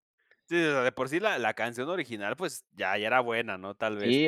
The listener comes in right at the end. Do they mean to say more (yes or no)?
yes